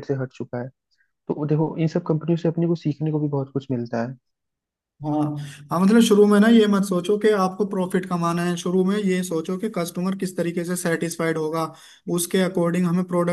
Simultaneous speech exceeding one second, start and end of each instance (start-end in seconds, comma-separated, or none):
none